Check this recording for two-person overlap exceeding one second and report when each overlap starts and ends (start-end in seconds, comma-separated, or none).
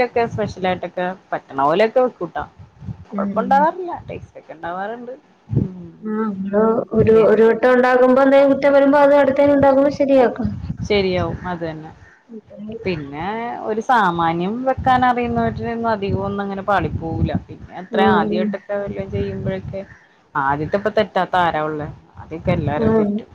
none